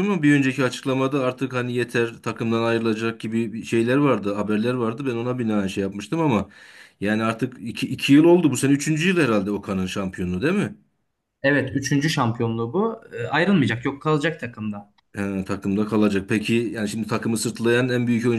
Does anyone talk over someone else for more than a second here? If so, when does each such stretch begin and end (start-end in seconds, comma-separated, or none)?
none